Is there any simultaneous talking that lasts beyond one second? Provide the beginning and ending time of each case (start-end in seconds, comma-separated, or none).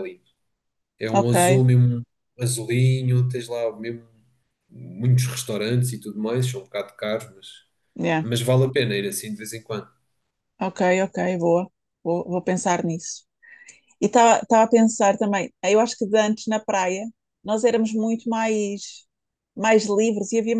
none